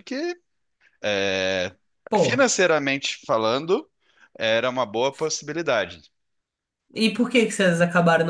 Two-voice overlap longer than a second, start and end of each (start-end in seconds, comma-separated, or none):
none